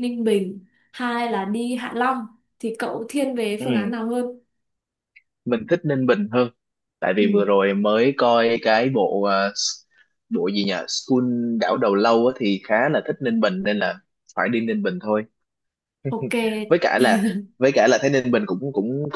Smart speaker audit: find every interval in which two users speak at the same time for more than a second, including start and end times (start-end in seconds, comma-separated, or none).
none